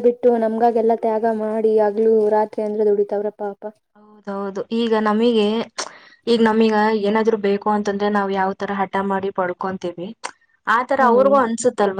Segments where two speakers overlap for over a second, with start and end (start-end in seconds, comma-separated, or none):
none